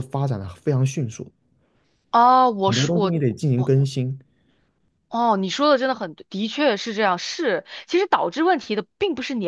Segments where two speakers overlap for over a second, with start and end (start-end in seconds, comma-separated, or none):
none